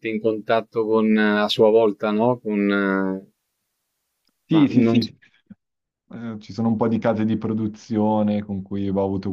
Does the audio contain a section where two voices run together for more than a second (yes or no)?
no